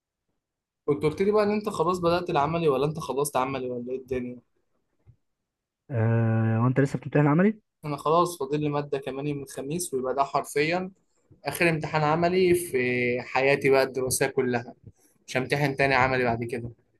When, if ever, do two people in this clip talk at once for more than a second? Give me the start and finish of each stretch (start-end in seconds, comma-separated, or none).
none